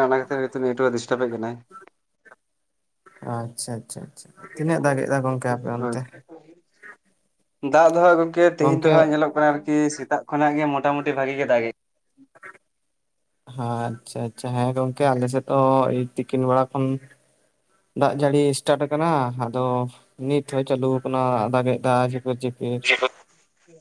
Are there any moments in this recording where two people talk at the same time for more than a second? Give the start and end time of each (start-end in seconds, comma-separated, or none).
4.5-6.0